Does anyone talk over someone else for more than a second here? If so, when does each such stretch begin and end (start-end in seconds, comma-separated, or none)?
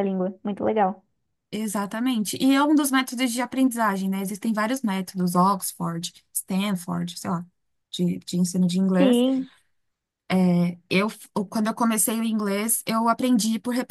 none